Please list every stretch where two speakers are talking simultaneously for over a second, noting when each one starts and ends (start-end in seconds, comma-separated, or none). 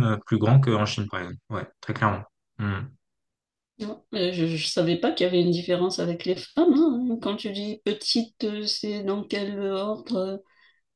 none